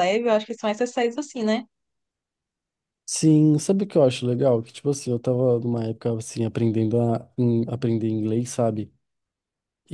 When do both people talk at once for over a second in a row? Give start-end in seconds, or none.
none